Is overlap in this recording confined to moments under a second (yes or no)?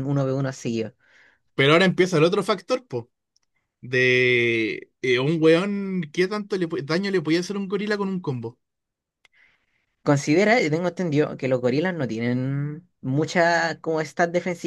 yes